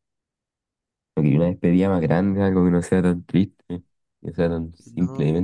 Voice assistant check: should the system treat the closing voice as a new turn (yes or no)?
yes